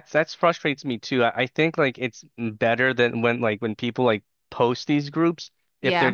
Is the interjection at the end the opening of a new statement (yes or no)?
no